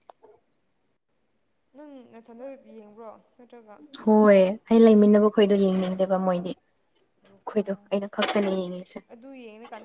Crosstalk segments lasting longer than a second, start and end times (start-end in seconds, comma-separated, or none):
none